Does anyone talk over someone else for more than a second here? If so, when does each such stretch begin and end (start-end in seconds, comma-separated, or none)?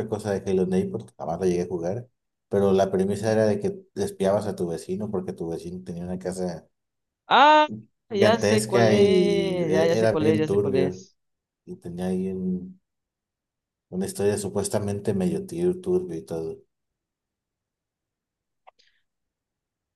8.1-11.0